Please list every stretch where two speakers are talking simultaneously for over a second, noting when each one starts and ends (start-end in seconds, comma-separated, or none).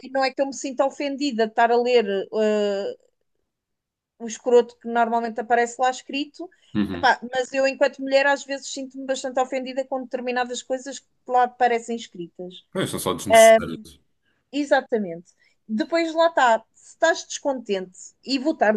none